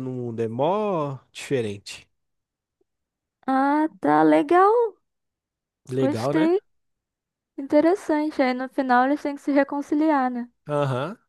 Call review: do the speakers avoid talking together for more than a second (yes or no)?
yes